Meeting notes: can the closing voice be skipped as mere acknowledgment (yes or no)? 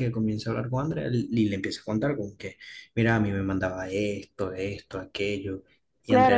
no